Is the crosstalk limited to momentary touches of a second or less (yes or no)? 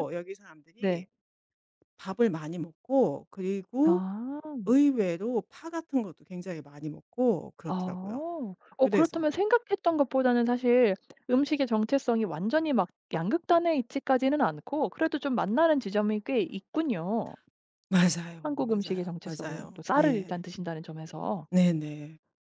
no